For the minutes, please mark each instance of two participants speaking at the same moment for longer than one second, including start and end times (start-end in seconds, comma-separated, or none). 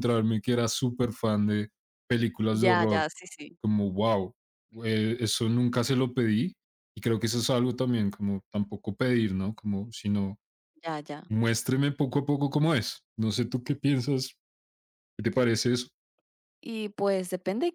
none